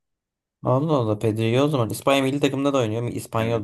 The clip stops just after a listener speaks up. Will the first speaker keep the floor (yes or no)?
no